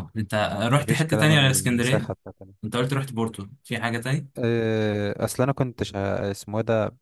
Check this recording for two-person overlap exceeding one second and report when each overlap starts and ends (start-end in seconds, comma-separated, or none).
0.8-2.1